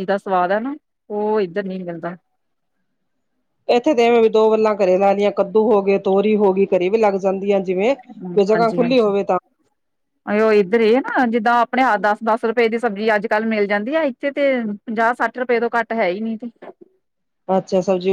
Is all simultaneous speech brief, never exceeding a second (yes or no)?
yes